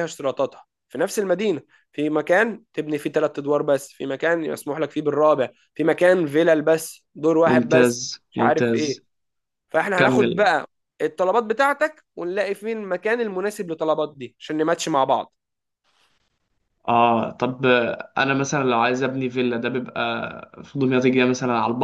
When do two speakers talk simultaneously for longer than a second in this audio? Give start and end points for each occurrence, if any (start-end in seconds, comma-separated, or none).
7.5-9.0